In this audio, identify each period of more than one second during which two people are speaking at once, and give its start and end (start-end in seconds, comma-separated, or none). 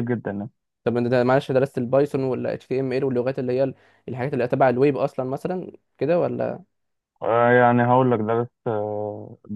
none